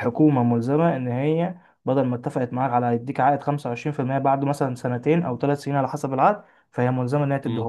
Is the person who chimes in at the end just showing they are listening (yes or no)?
yes